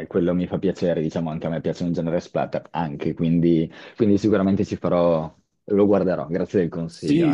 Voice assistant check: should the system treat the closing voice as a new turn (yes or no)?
yes